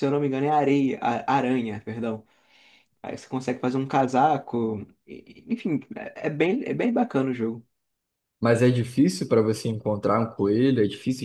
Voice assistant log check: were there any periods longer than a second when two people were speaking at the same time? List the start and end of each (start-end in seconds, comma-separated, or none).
none